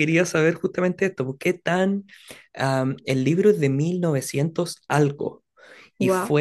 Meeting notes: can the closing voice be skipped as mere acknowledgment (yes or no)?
yes